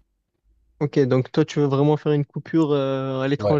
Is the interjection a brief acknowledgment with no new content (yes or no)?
no